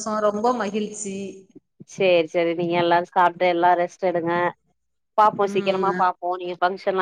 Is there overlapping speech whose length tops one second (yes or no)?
no